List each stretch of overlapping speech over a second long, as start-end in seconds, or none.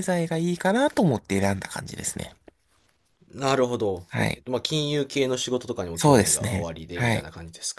5.9-7.3